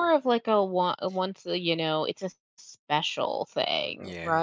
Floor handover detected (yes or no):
yes